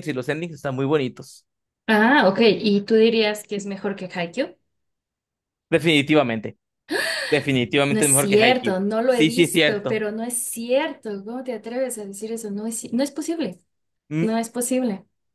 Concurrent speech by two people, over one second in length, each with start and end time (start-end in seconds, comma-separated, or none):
7.9-10.0